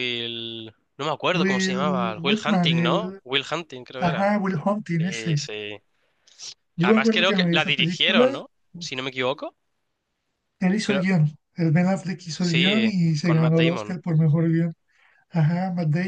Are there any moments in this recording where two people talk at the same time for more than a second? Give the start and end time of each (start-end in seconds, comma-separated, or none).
1.3-3.2, 6.8-8.2, 12.4-14.0